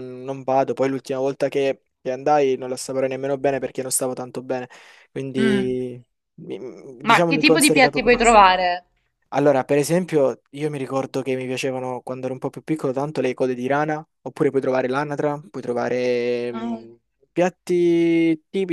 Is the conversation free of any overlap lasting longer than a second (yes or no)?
no